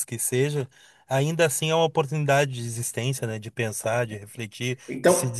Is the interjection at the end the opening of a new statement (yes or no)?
no